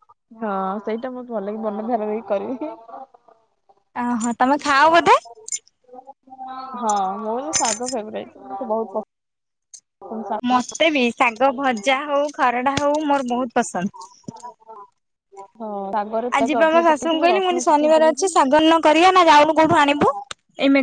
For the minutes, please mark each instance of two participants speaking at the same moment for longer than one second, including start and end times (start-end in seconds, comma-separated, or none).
16.4-18.3